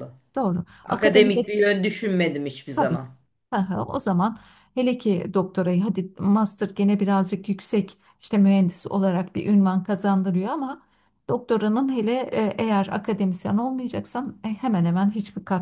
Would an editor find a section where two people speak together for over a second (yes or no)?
no